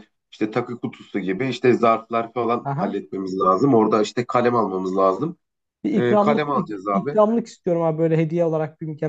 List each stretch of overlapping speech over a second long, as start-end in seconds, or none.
5.9-7.2